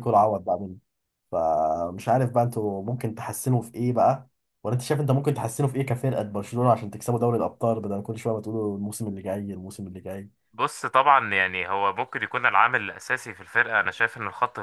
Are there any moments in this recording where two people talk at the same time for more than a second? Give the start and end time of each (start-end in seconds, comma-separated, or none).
none